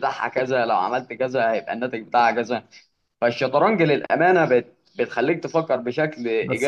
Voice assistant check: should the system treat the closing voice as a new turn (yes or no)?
yes